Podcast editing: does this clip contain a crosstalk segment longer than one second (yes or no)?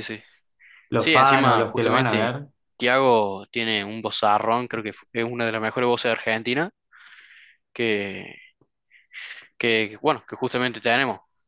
yes